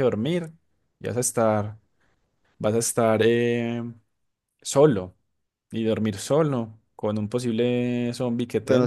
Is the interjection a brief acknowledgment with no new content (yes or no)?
no